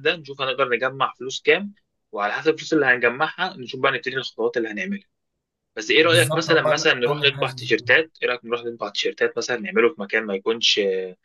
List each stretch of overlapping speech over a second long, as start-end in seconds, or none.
6.0-7.7